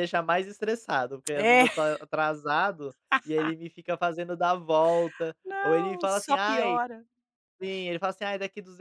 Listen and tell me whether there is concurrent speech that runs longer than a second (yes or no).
yes